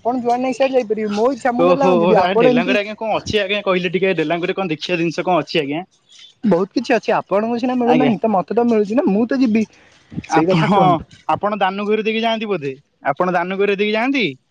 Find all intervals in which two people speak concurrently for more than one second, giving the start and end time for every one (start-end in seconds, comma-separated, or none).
none